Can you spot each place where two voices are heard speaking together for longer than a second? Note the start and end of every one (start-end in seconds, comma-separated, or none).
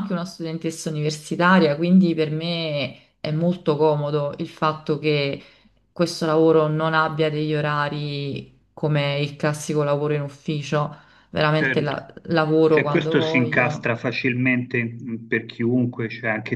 12.7-13.9